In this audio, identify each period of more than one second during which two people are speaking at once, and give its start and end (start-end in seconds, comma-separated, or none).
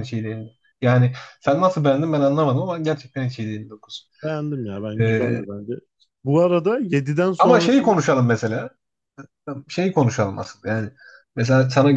none